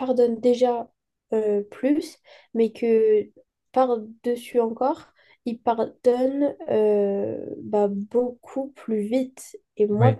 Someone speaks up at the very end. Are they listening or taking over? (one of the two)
listening